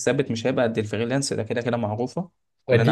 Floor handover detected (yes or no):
yes